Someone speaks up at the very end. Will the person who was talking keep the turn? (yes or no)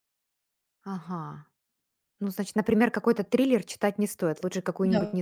no